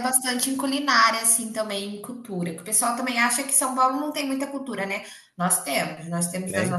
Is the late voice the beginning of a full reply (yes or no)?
no